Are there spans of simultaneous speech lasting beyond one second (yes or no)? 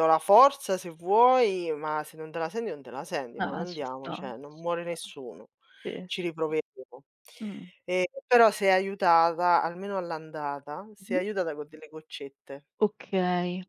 yes